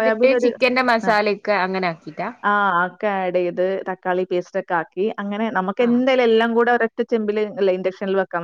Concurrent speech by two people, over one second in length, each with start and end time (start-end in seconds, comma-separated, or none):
none